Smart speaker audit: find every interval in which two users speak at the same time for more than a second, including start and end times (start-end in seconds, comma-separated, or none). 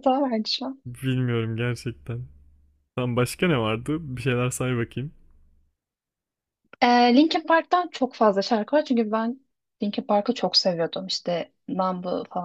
none